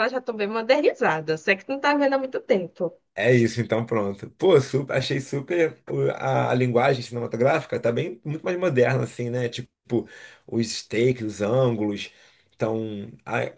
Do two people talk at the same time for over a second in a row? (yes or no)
no